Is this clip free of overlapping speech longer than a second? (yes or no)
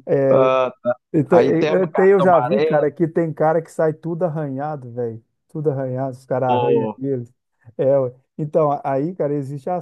no